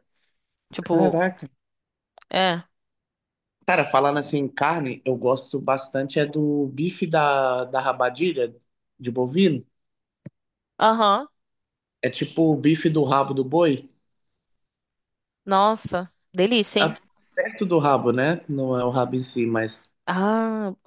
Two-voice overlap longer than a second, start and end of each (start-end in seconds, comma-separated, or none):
none